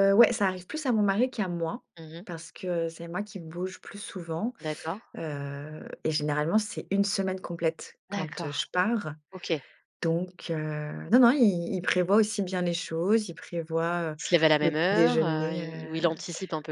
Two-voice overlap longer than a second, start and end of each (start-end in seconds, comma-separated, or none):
14.6-16.0